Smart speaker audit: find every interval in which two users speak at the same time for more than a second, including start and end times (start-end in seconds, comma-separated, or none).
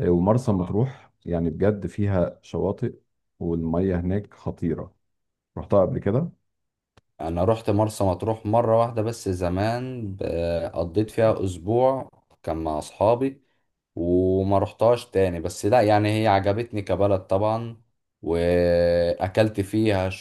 none